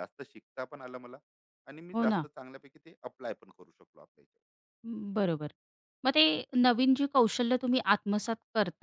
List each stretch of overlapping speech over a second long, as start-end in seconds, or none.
none